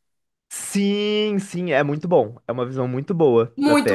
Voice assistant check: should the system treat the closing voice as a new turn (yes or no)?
yes